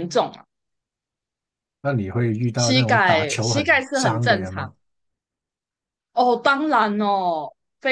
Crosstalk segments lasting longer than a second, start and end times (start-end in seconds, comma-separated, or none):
2.5-4.7